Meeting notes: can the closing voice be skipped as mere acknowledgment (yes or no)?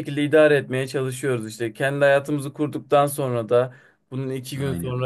yes